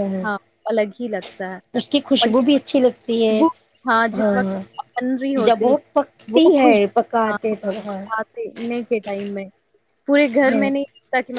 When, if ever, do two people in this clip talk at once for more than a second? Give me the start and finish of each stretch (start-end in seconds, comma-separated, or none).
5.4-7.4